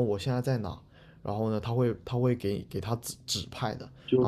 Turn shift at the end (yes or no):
yes